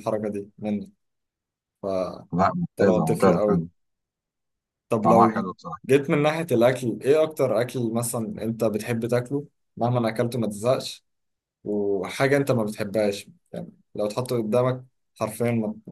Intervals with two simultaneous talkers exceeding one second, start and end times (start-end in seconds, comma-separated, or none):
2.3-3.7